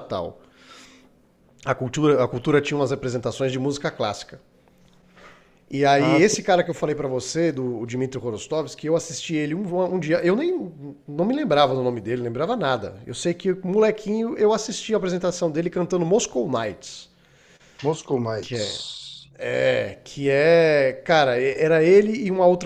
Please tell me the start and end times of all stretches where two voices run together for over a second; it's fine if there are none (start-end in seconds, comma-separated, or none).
none